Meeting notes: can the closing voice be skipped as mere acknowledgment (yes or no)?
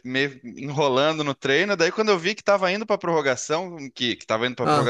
yes